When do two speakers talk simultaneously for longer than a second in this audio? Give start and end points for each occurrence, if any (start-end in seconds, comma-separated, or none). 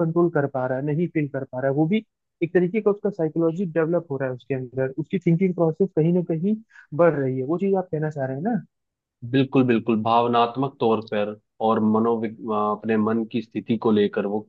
none